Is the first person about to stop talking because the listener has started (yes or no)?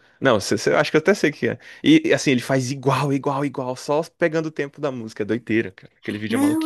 yes